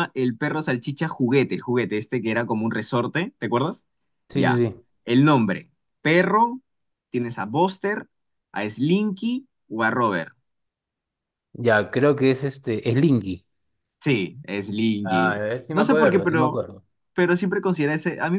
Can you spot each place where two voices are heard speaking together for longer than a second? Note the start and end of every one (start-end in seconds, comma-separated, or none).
15.0-16.6